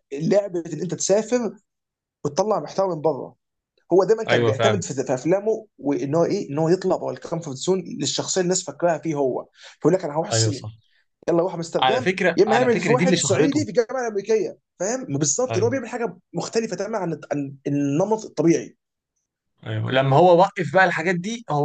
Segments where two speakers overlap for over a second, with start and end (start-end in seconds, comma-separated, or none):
11.8-13.6